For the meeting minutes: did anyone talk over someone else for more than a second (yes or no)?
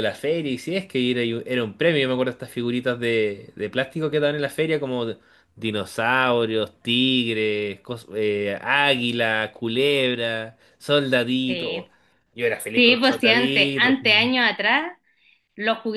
yes